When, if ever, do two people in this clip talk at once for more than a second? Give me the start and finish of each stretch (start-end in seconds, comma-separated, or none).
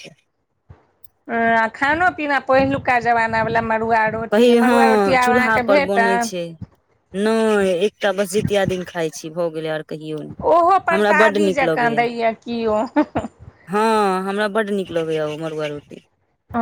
10.4-12.0